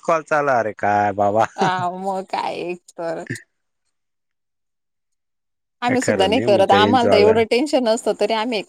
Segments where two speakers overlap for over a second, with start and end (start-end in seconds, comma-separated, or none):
5.9-7.3